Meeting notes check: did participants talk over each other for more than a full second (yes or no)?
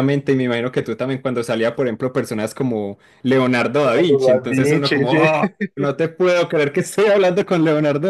yes